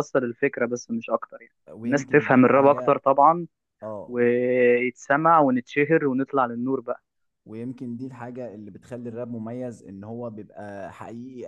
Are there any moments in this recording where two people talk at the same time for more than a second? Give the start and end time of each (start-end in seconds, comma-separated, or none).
1.7-3.0